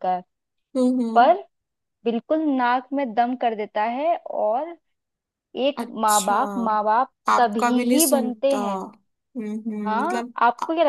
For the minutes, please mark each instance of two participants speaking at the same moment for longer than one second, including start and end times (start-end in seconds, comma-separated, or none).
7.3-8.8